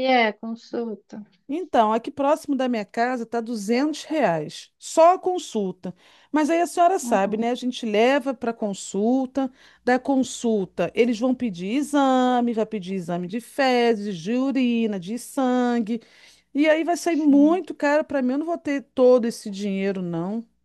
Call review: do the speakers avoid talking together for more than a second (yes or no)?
yes